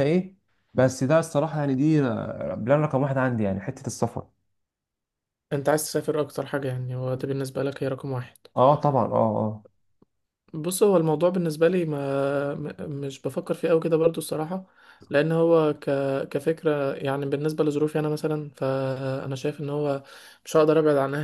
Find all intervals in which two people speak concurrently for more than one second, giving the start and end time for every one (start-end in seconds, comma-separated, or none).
none